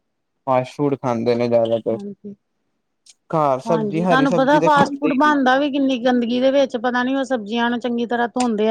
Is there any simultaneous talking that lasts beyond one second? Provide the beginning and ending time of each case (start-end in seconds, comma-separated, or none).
3.7-5.3